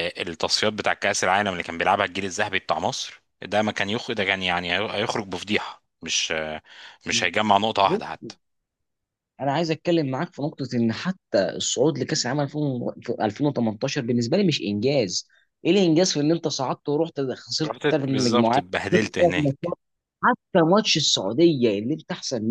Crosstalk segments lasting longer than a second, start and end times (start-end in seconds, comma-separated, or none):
17.6-19.7